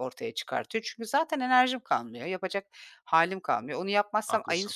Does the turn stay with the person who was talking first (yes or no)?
yes